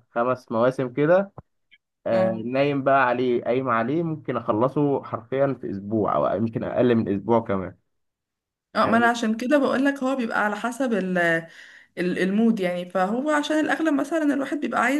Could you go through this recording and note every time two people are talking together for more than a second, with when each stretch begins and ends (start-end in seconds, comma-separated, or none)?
none